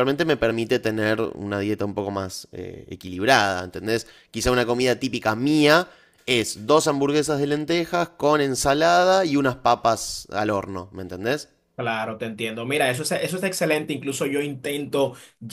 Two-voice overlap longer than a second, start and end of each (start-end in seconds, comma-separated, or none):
none